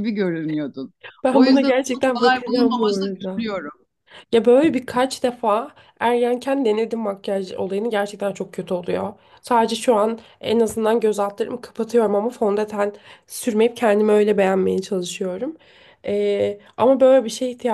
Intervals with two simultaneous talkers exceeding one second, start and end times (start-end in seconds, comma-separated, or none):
1.3-3.5